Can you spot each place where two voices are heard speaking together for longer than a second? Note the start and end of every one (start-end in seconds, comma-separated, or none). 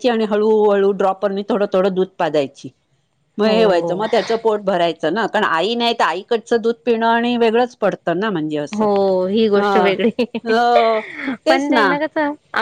none